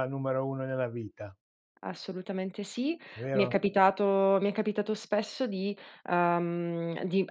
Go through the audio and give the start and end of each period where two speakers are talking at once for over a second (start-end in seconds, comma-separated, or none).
none